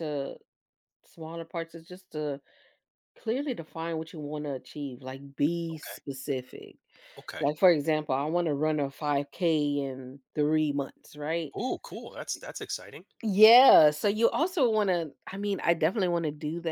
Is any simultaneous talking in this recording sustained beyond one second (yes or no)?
no